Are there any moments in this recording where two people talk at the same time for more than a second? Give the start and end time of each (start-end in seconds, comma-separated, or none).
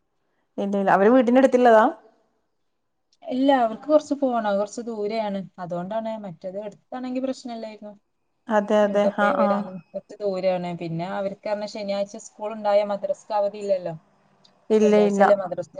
none